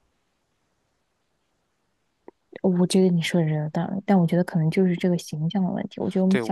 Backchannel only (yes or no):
yes